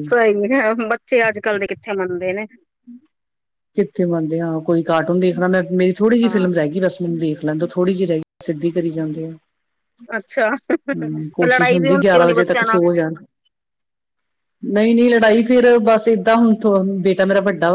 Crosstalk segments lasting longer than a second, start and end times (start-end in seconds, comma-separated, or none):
11.2-12.8